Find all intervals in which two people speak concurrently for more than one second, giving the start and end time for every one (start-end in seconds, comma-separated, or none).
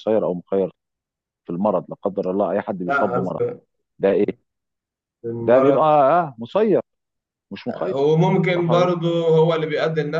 none